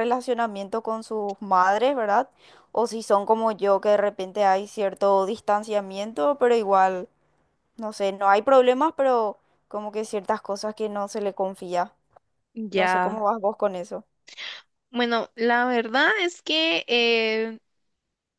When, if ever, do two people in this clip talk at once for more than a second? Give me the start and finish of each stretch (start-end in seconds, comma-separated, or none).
none